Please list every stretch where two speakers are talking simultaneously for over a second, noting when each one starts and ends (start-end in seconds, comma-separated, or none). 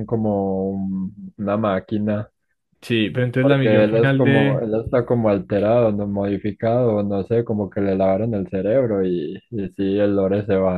3.4-4.6